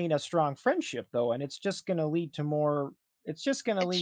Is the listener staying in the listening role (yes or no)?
yes